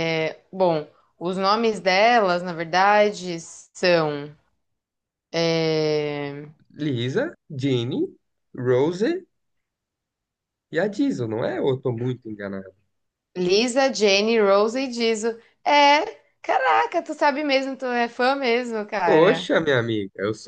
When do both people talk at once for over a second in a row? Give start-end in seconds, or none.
none